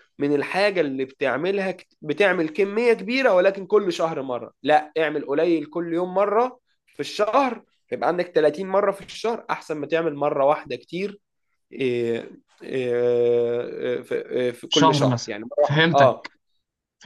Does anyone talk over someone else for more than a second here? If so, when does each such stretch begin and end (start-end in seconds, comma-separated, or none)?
14.7-16.3